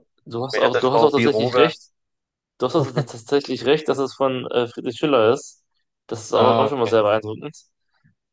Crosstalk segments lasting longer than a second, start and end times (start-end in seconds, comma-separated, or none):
0.5-1.7